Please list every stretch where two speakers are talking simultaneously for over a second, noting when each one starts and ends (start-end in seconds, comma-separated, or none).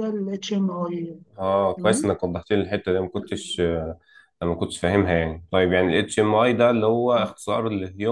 none